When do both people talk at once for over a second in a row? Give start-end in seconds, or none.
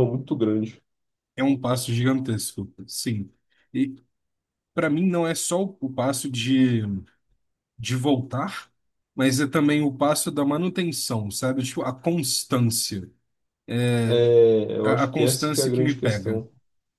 14.8-16.4